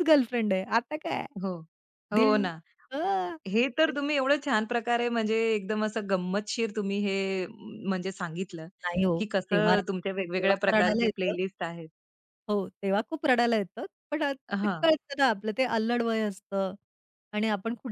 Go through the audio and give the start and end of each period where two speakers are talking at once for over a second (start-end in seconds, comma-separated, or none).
9.5-11.3